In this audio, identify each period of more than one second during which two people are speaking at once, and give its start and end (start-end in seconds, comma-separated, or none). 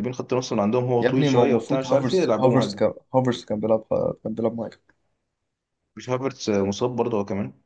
1.0-2.9